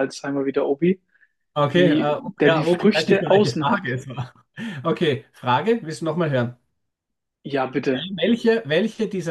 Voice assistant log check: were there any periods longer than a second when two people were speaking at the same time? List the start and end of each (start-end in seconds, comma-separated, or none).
1.7-4.0